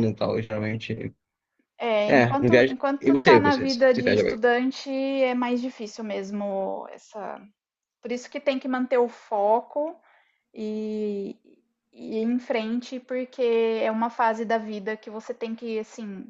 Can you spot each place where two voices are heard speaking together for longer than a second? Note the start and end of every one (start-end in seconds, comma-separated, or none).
2.1-4.5